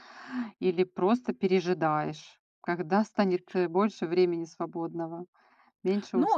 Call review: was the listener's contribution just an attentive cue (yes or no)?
no